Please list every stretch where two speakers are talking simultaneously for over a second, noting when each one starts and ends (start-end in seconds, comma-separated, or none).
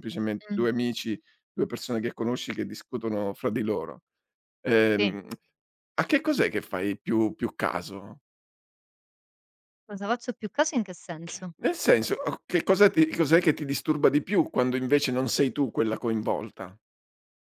none